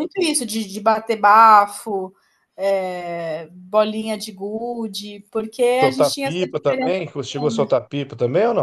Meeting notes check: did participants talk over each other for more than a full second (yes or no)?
yes